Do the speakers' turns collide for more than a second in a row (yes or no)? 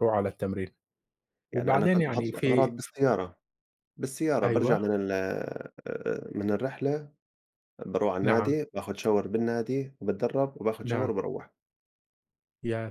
yes